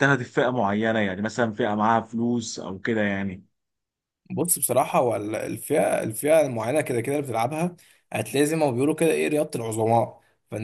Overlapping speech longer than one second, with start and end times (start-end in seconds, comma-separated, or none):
none